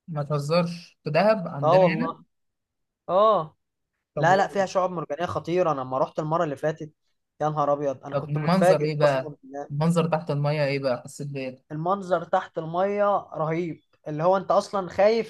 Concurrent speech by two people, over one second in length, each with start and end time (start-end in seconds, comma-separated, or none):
8.1-9.3